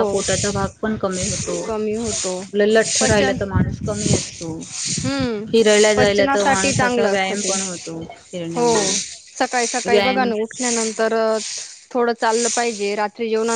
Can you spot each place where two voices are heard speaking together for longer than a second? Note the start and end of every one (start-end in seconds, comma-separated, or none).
6.0-7.5, 9.9-11.1